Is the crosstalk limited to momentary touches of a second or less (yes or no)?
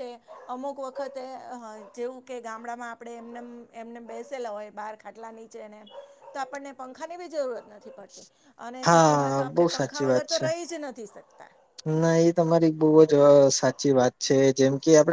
no